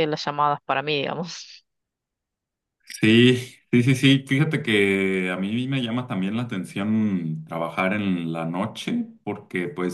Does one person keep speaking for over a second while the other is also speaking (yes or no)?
no